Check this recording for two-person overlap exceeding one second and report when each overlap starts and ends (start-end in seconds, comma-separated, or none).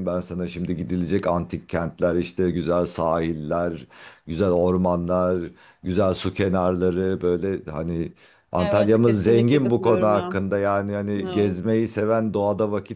8.6-10.4